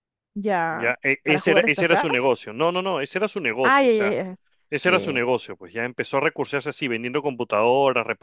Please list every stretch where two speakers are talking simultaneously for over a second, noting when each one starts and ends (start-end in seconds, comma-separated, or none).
0.7-2.1